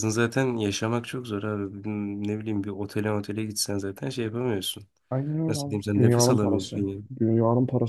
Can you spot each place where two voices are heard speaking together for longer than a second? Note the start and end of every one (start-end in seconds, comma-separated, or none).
5.5-6.8